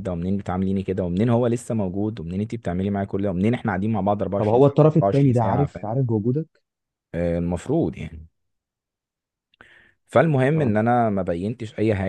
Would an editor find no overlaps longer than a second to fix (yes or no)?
no